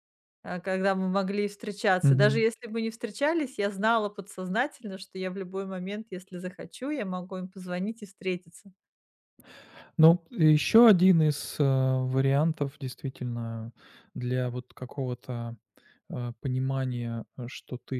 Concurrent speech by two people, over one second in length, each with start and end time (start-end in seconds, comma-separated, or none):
none